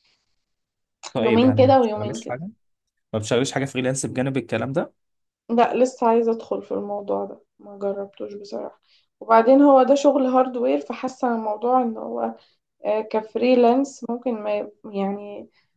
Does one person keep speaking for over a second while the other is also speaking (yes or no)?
yes